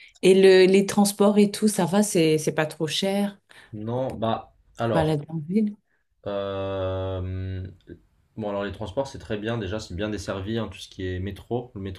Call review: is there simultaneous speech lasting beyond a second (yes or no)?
no